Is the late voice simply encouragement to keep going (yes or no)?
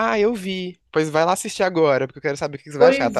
no